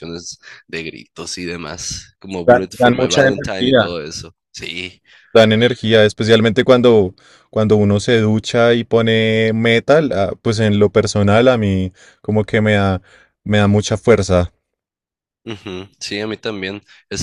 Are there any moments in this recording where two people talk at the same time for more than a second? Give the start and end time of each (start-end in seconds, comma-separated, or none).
2.4-4.0